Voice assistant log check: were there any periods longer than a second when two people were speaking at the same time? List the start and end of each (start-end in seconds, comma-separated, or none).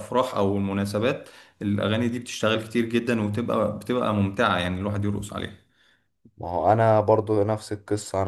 none